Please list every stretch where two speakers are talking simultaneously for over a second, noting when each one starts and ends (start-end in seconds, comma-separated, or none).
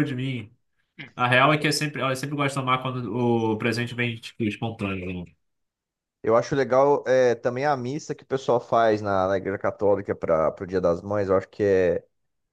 none